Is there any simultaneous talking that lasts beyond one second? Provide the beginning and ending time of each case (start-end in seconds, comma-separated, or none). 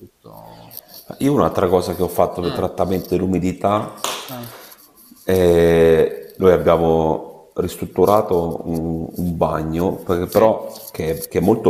none